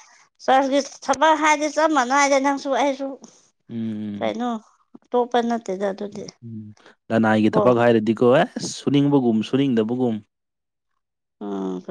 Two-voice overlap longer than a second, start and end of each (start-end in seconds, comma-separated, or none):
none